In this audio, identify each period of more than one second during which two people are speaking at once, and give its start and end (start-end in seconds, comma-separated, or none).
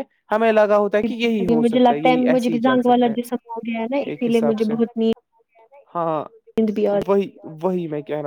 1.1-4.7